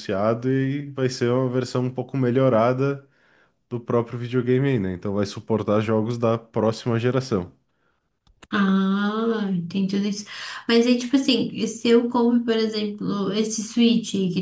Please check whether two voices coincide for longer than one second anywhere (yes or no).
no